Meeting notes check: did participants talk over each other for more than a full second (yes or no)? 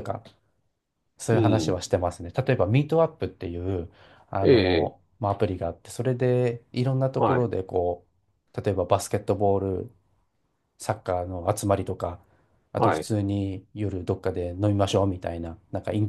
no